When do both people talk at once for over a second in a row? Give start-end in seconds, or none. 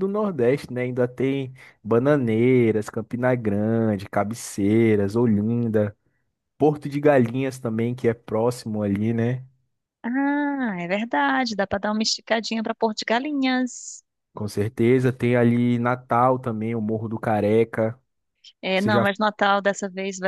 none